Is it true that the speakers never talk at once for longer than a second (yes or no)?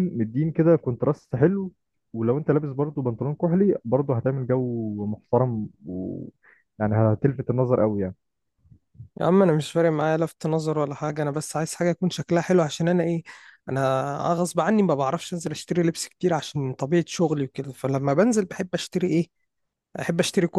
yes